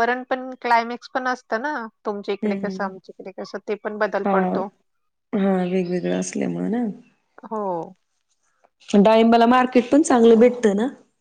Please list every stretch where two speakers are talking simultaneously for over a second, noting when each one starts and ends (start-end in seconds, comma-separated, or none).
none